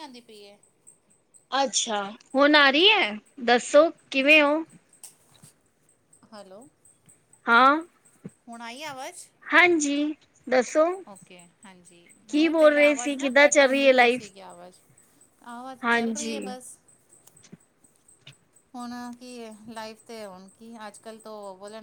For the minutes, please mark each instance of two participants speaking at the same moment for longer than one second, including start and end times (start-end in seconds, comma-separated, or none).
12.3-14.3